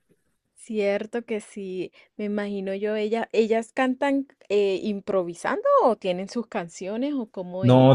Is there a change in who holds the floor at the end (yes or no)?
yes